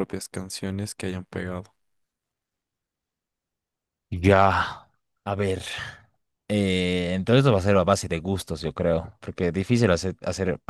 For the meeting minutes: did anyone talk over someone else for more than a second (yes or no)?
no